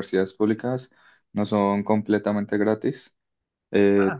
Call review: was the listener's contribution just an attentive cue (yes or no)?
yes